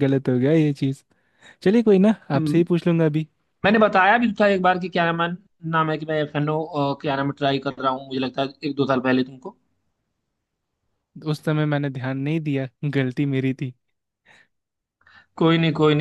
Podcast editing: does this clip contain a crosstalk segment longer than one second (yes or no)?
no